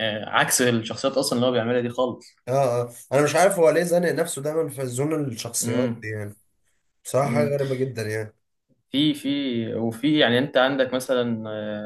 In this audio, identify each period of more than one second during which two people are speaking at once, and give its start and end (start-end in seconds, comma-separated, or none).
none